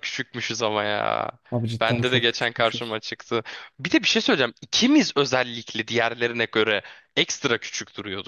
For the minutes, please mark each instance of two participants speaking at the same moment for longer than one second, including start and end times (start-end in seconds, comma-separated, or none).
1.8-3.0